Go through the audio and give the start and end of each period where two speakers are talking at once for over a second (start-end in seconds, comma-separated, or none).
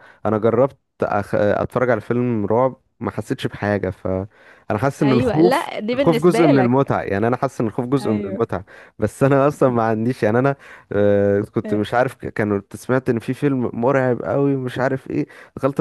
5.0-6.9